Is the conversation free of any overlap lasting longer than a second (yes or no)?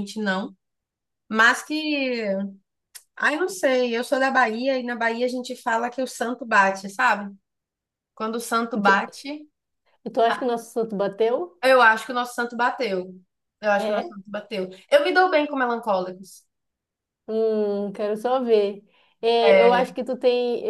yes